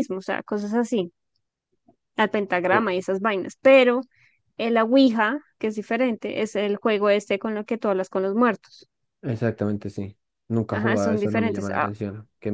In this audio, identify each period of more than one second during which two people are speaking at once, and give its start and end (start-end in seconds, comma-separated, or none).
10.7-11.9